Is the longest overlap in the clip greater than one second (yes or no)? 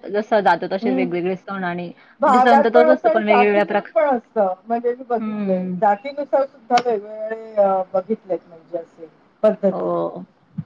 yes